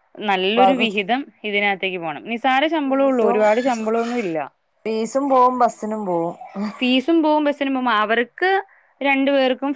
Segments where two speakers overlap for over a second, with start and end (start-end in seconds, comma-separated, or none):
none